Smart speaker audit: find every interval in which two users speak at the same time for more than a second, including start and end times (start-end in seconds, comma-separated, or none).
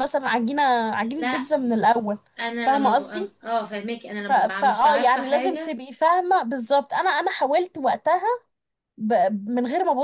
4.3-5.8